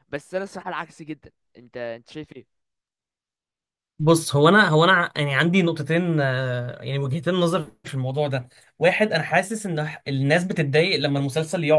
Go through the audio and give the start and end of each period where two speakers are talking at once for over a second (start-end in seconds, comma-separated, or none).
none